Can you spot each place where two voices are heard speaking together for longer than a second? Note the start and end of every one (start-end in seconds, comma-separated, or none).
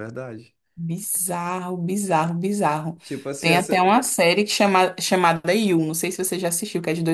none